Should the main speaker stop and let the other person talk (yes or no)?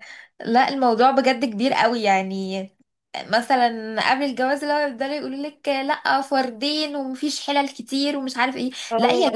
no